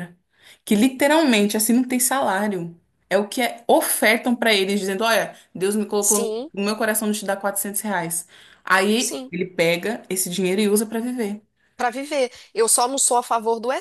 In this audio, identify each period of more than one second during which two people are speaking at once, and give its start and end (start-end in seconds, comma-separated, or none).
none